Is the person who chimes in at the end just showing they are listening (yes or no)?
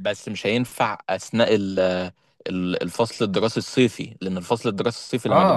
no